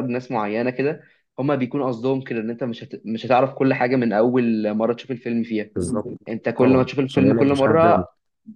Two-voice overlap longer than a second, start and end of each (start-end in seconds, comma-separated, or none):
6.6-8.0